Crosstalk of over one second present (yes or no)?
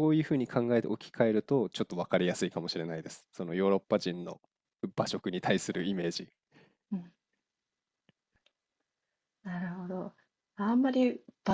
no